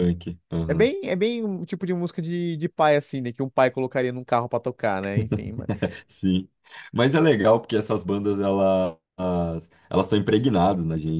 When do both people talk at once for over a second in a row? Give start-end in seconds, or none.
none